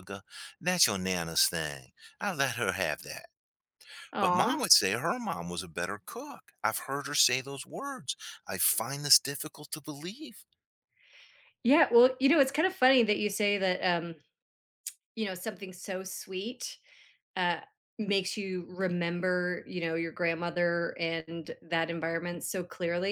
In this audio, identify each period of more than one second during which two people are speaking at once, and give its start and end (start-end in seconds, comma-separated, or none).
none